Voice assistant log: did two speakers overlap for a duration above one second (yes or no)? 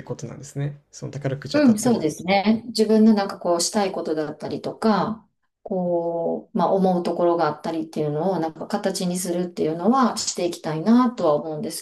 no